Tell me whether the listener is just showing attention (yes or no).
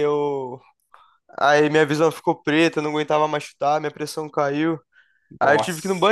yes